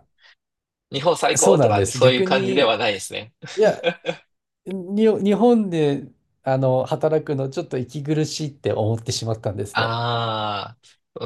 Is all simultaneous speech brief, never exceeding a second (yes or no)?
no